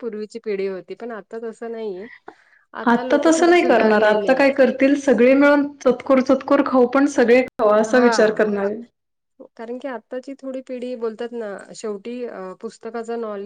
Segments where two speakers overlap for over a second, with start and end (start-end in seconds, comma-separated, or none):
2.9-4.6